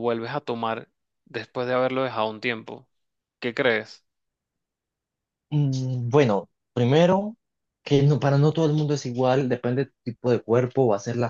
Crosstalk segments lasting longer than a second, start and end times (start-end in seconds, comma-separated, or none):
none